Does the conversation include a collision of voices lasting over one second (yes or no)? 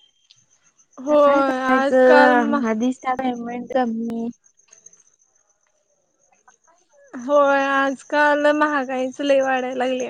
yes